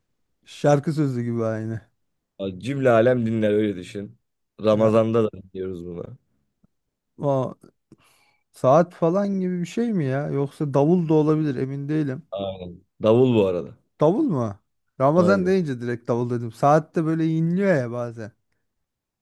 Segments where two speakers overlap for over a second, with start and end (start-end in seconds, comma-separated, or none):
none